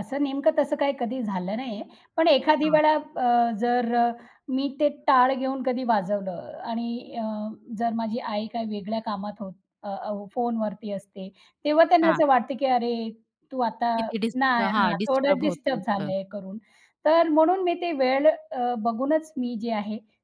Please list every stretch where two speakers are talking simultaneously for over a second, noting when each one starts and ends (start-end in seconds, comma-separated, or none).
14.4-16.1